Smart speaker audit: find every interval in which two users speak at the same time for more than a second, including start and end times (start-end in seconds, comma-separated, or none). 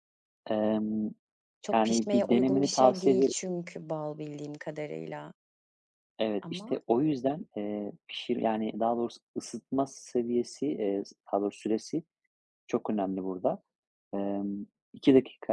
1.7-3.3